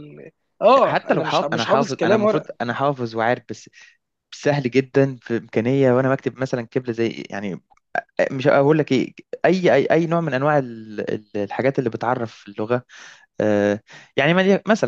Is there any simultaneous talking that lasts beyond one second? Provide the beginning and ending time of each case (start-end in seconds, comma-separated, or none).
0.8-2.5